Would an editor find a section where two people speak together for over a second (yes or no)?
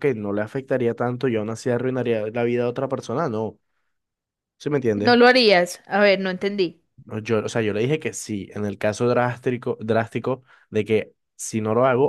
no